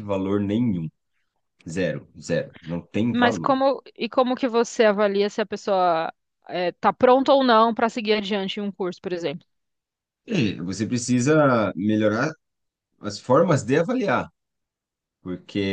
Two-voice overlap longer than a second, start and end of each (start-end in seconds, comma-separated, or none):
none